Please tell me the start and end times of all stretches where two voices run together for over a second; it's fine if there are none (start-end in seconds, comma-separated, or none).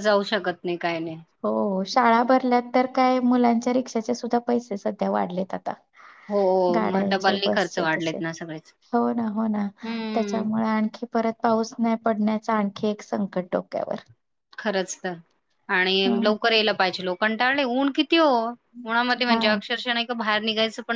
6.9-8.3